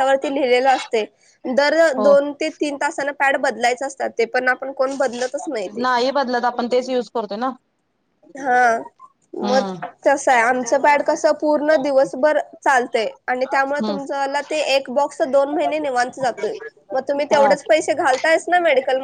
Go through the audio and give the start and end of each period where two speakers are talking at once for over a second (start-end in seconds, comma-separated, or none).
none